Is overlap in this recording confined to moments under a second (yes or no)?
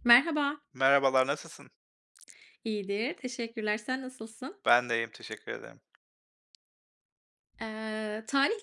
yes